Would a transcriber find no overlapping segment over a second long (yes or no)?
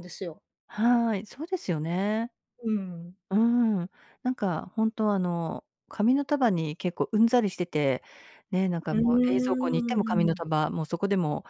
no